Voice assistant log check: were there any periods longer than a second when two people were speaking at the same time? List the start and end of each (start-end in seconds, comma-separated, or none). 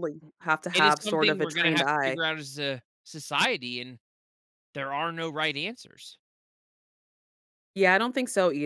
0.7-2.2